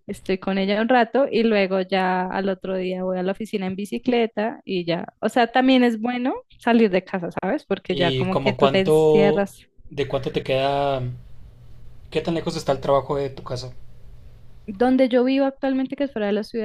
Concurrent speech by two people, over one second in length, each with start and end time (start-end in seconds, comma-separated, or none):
7.9-9.5